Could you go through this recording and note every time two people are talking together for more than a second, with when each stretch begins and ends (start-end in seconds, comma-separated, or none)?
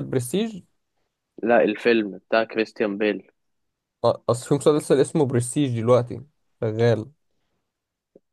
none